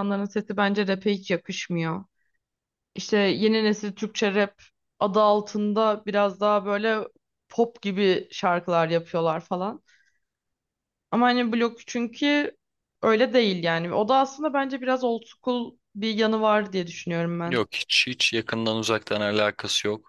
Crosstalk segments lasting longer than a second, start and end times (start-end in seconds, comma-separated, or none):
none